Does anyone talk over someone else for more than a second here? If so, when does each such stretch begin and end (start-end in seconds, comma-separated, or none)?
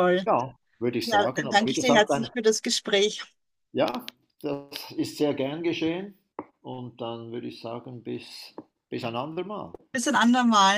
1.0-2.3